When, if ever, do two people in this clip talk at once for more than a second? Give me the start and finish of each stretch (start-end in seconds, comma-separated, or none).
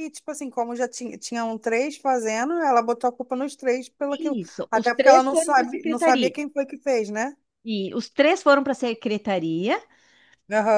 4.4-6.3